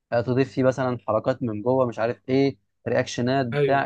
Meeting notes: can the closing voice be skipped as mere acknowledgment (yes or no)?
yes